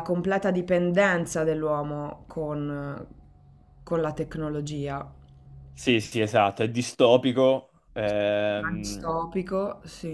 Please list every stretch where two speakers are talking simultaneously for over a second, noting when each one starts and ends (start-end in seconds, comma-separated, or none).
none